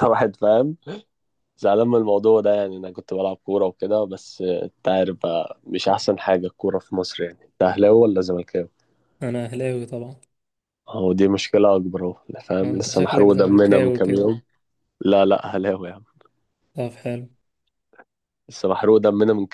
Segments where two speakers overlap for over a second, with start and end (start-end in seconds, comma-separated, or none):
12.6-14.3